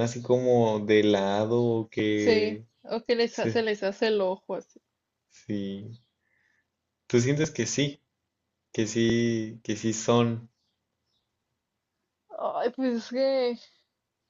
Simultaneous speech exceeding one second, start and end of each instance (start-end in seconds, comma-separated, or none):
none